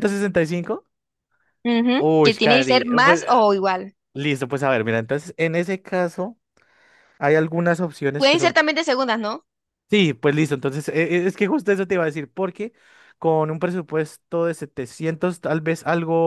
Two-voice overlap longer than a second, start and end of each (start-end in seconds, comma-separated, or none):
2.0-3.4